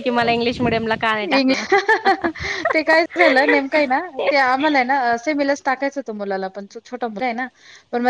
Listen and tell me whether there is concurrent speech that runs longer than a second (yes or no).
no